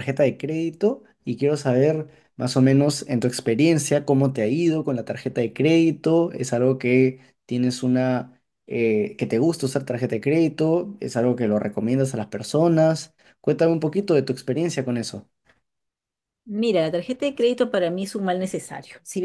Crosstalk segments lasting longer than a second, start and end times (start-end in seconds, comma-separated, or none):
none